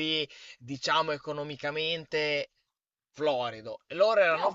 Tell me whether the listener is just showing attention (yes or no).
yes